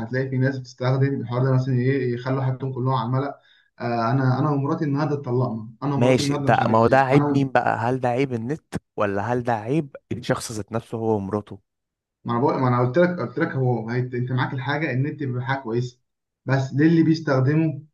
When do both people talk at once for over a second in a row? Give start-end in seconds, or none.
6.0-7.5